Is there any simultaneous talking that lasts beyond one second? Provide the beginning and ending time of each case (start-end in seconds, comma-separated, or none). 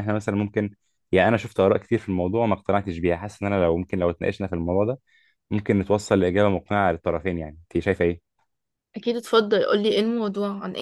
none